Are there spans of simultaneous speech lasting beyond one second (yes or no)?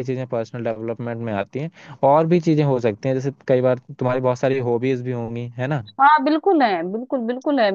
no